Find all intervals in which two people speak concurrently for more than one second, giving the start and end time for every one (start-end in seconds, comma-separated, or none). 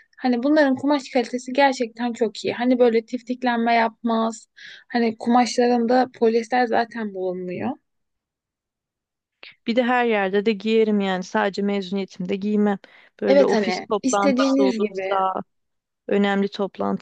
13.3-15.2